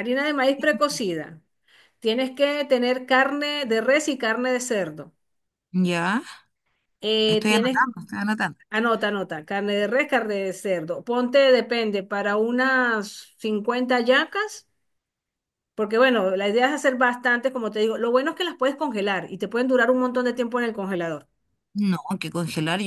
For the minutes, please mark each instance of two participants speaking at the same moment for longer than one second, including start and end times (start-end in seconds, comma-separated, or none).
none